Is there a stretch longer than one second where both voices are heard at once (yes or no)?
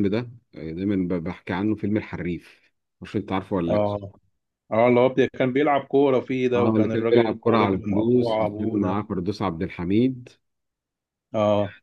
yes